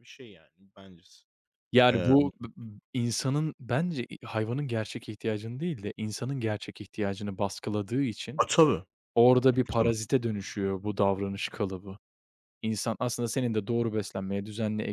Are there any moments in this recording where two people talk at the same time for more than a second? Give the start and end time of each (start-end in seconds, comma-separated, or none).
none